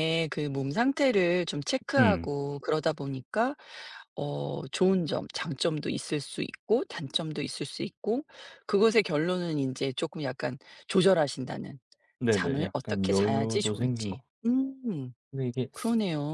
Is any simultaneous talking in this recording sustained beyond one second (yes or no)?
yes